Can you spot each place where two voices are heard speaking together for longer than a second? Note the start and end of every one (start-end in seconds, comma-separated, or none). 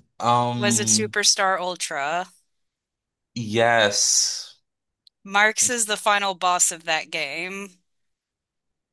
none